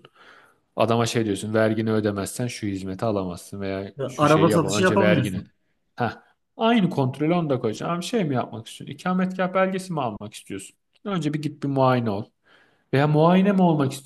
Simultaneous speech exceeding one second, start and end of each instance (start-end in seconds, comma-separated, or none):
4.0-5.4